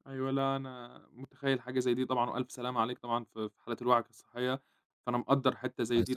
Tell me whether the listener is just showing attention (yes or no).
yes